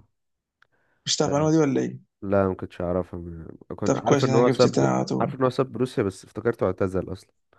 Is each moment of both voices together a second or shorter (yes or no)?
no